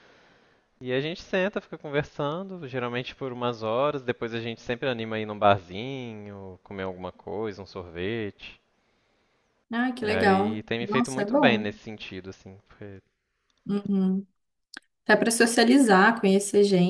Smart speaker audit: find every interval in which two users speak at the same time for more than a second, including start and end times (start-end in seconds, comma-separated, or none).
10.0-11.7